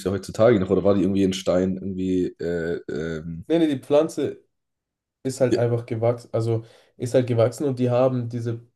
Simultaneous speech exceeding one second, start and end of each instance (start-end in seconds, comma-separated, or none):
none